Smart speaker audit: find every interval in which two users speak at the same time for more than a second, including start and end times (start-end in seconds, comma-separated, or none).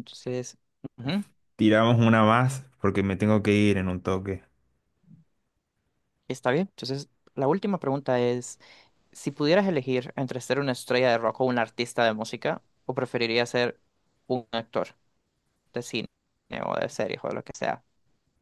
none